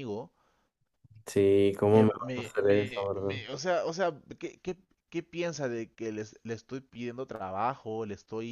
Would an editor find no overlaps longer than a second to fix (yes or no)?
no